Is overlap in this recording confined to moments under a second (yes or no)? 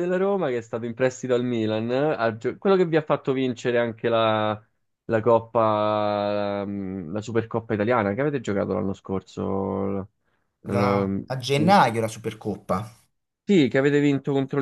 yes